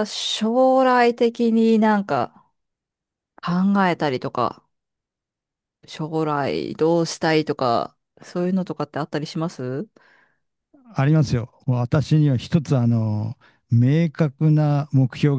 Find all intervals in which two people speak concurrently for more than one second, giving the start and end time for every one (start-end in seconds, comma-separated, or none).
none